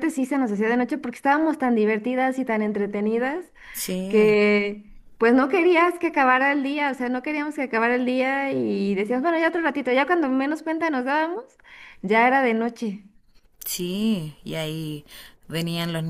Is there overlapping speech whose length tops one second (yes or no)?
no